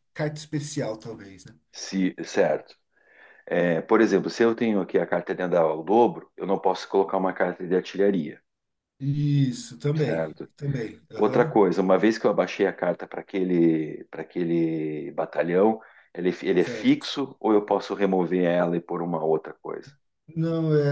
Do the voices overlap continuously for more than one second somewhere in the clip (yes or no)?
no